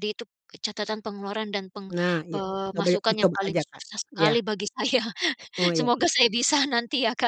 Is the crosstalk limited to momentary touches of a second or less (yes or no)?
no